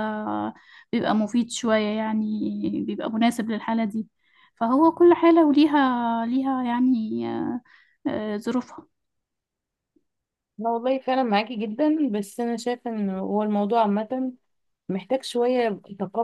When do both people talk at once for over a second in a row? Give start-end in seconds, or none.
none